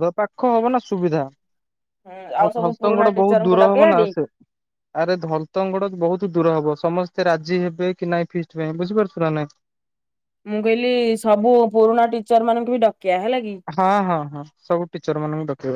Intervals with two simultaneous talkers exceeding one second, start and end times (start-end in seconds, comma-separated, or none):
2.1-4.0